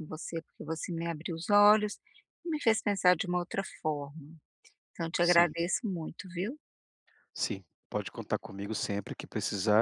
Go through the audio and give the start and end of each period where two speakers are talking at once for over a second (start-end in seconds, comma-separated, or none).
none